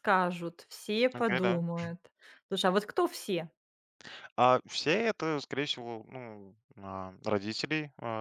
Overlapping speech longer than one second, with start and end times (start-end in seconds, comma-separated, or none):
none